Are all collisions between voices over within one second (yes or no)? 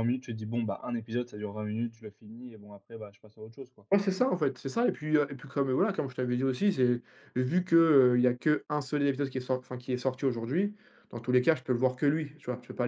yes